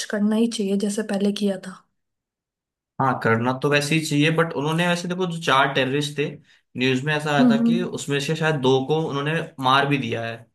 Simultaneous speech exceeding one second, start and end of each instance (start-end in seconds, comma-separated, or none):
none